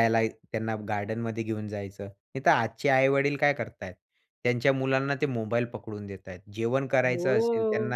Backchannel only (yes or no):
yes